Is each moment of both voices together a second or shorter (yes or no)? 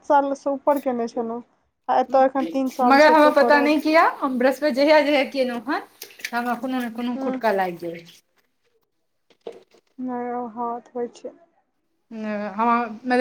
no